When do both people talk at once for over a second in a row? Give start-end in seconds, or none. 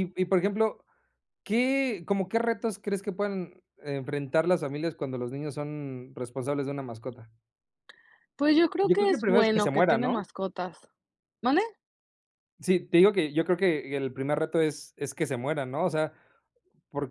8.8-10.2